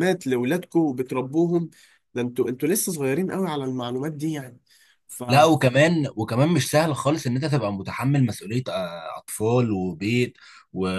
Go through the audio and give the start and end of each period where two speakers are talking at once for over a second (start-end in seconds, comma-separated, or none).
none